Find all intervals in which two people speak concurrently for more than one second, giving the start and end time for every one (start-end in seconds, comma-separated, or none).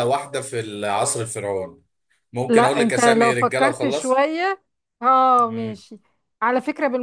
2.5-4.2